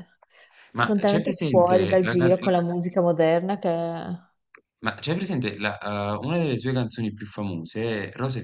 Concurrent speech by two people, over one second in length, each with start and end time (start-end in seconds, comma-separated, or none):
0.8-2.3